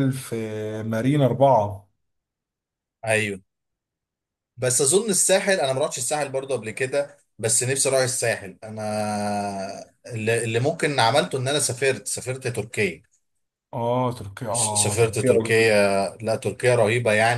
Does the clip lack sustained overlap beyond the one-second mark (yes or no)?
no